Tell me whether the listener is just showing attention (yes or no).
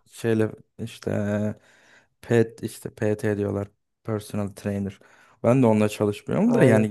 yes